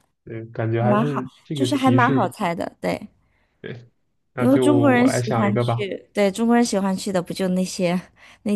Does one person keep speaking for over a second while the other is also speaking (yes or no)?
yes